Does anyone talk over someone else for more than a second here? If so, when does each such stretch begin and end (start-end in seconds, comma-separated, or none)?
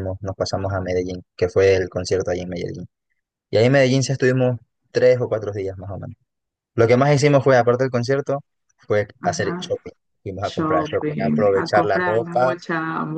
10.4-12.6